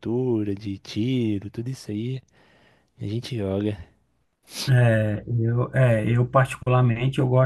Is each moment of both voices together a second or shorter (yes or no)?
yes